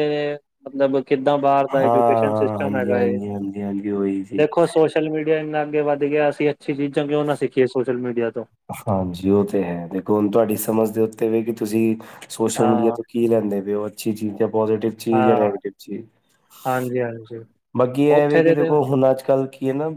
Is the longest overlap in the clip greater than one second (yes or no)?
yes